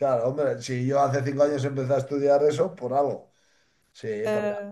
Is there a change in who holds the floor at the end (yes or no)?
no